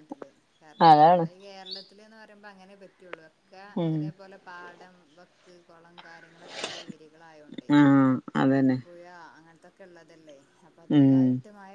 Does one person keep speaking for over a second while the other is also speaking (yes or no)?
no